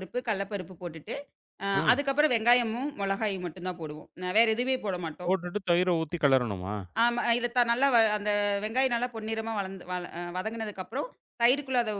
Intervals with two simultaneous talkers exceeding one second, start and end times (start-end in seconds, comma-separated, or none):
none